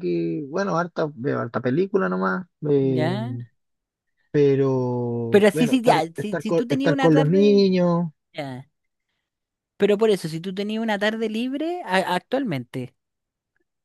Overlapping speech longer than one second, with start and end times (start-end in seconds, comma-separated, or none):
5.3-7.7